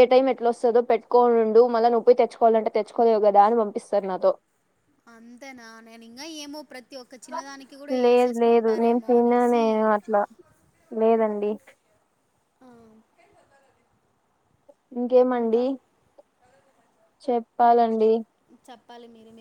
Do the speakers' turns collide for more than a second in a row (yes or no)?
yes